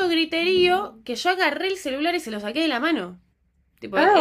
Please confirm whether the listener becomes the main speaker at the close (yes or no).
yes